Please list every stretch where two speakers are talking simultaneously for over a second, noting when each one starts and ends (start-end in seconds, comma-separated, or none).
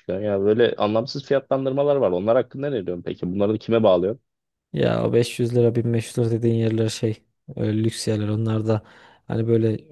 none